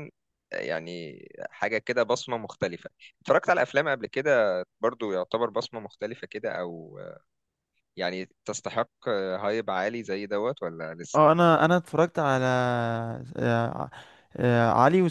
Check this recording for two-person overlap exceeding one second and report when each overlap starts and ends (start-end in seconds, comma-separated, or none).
none